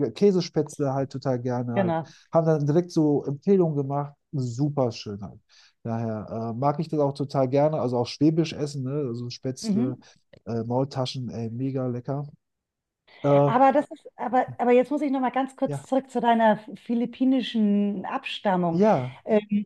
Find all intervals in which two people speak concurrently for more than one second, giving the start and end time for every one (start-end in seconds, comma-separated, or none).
none